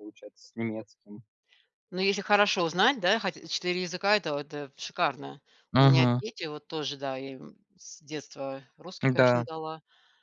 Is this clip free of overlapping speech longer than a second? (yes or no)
yes